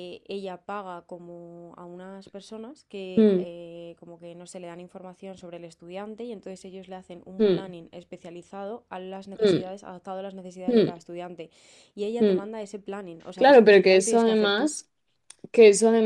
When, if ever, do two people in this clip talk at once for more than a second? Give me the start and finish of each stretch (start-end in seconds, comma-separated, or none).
13.3-14.7